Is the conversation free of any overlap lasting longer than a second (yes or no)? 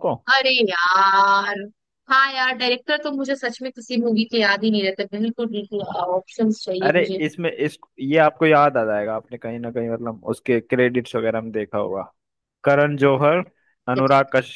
yes